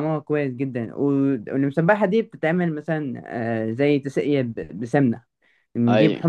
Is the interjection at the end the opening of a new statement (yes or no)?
no